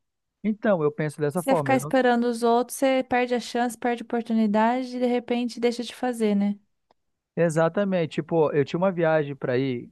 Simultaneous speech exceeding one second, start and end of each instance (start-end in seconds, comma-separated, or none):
none